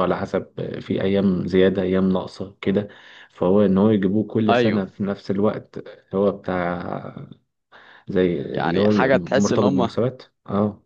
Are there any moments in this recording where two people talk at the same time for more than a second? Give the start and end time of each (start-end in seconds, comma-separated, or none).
8.5-10.0